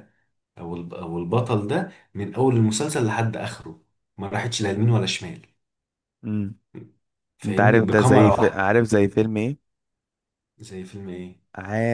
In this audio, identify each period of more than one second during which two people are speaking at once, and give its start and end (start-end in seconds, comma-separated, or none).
7.5-8.7